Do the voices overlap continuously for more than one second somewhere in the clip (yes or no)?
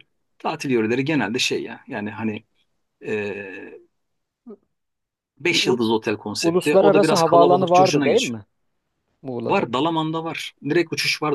yes